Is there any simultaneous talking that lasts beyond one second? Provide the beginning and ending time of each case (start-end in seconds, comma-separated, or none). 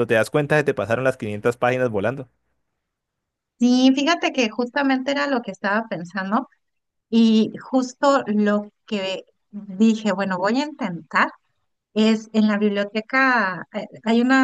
none